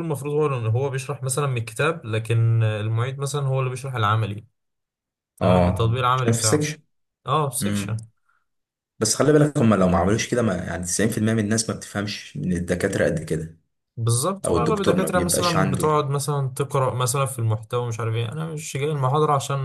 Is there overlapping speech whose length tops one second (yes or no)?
yes